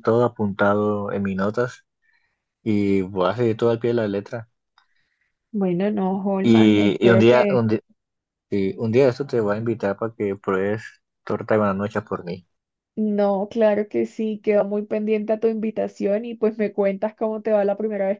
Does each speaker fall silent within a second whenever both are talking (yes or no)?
no